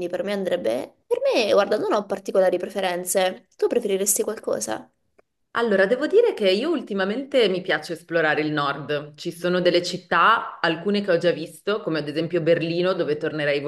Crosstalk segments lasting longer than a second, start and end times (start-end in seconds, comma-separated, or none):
none